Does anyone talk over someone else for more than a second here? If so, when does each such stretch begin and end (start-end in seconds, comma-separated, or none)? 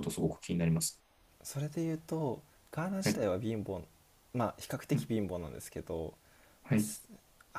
none